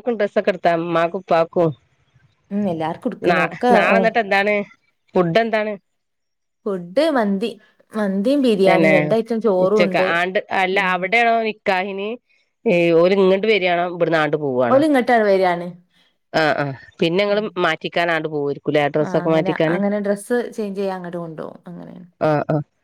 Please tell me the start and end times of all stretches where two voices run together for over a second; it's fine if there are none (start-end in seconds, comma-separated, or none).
none